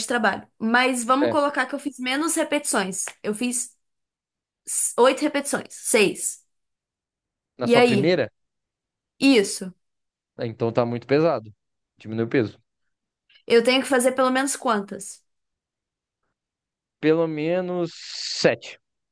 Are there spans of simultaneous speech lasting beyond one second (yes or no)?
no